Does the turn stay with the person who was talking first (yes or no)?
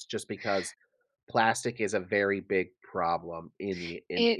no